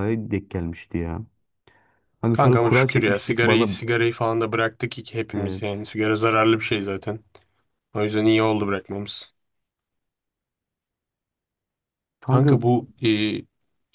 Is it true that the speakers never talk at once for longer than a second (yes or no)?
no